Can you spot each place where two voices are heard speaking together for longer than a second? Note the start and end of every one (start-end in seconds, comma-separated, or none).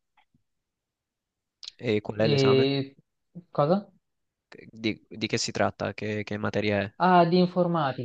none